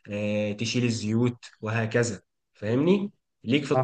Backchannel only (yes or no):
no